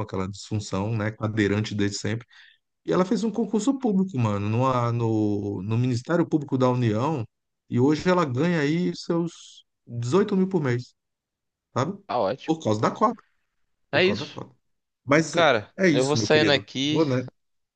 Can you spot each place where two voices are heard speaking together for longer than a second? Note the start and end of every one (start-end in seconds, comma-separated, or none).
15.3-17.1